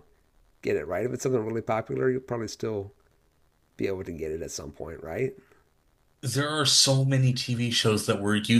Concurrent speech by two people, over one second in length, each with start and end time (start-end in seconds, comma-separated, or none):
none